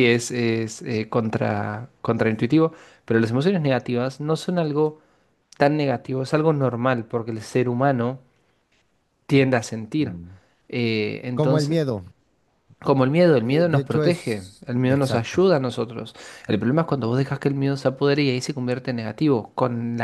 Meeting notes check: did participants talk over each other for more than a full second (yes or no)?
yes